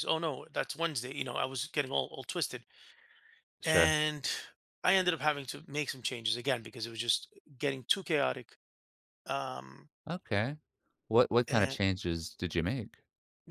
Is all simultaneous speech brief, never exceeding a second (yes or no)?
yes